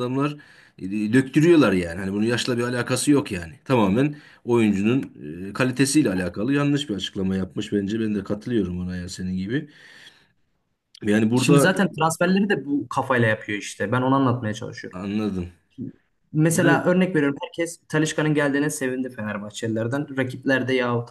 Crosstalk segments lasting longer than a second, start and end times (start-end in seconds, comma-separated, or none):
none